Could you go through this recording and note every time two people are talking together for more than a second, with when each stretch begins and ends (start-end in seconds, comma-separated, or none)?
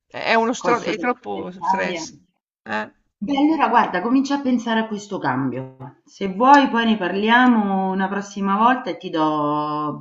0.6-2.1